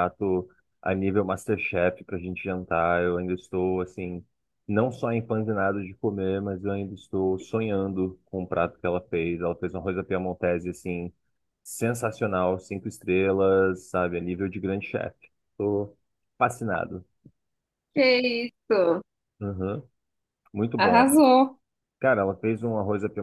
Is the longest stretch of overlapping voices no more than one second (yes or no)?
yes